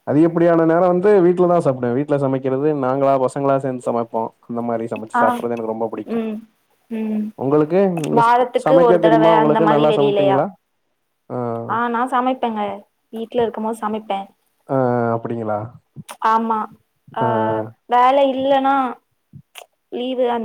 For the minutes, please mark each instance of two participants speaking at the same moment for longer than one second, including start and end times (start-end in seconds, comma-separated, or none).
8.2-10.4